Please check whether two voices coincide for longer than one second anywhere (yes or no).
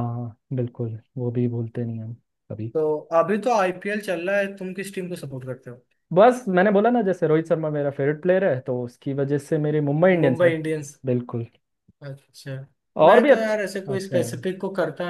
yes